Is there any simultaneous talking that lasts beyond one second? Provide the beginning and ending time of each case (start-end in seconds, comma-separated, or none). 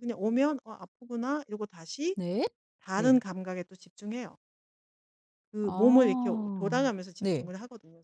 5.6-7.5